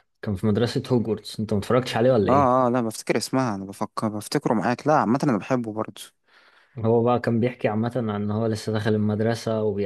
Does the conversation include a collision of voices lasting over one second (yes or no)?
no